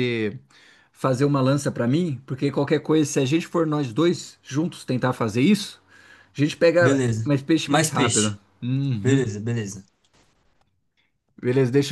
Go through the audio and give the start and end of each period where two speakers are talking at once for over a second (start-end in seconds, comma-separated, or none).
6.8-8.4